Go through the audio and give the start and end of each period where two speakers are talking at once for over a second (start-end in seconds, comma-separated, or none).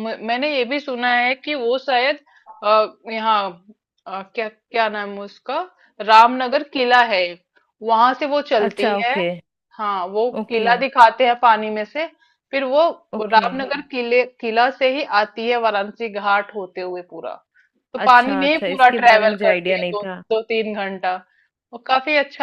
18.0-20.2